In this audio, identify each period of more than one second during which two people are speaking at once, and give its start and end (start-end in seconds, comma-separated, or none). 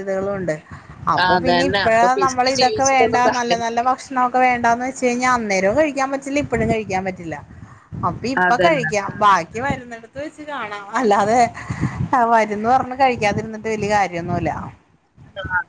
1.3-3.9